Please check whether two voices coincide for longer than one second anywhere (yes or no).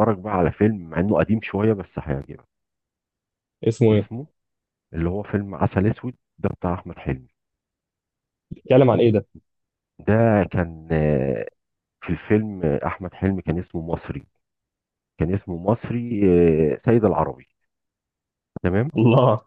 no